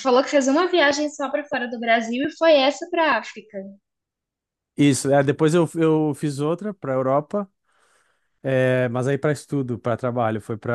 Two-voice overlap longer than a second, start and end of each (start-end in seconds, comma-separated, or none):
none